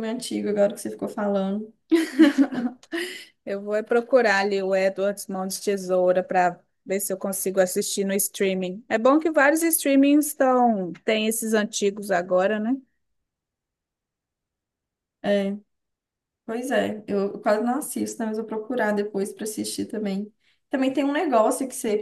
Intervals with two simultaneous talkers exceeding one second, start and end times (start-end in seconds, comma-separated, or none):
none